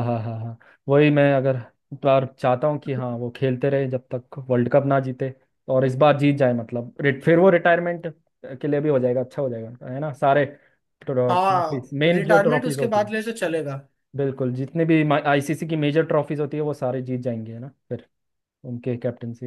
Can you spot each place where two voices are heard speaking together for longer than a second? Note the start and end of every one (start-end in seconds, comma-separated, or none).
11.3-13.1